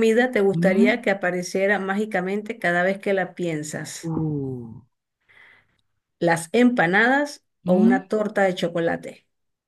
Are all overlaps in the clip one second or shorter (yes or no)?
yes